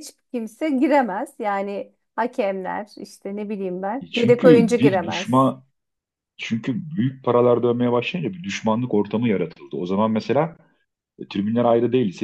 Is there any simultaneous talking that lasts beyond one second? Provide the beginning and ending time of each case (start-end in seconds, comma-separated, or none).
4.0-5.5